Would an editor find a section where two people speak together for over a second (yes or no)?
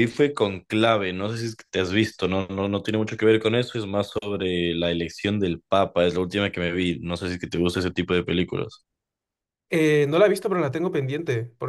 no